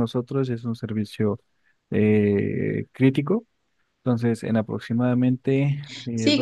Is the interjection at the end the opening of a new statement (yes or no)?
yes